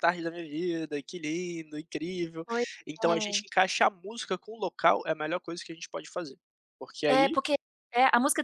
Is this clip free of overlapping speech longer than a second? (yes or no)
yes